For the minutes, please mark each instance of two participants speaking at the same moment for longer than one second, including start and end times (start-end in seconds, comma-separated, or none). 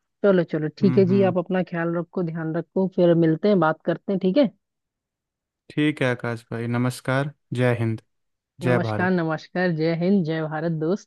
none